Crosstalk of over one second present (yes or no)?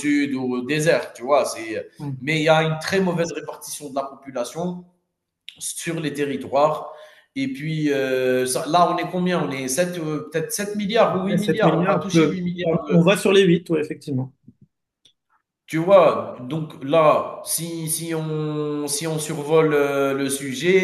yes